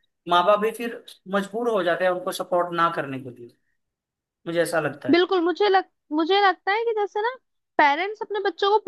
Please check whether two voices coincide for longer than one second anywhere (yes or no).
no